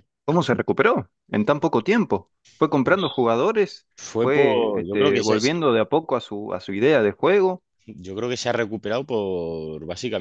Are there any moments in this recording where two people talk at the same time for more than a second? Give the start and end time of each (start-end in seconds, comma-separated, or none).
4.0-5.4